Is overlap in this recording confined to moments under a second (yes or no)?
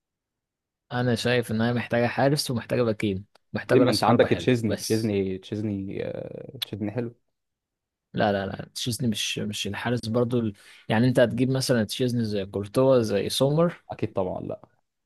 no